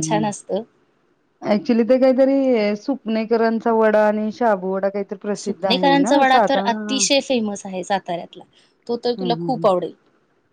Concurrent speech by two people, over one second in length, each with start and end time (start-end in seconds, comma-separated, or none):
5.4-7.0